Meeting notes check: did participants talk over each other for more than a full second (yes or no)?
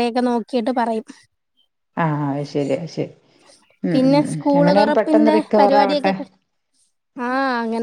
yes